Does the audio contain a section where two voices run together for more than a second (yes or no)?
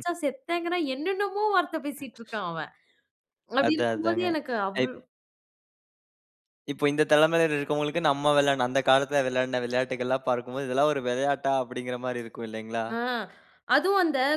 no